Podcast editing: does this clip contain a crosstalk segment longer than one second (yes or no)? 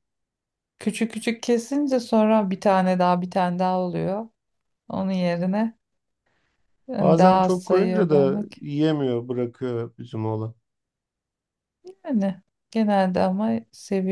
yes